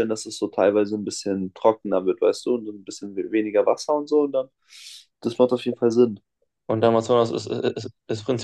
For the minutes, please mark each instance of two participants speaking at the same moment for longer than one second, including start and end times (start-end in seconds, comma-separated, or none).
none